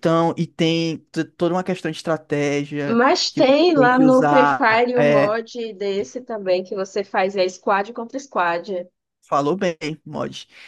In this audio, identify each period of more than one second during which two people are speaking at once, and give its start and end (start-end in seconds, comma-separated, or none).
2.9-5.4